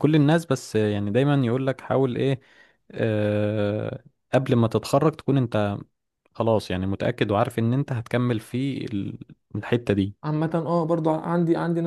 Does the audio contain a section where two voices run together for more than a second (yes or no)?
no